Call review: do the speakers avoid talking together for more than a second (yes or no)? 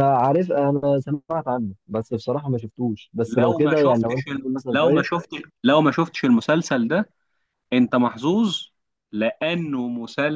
no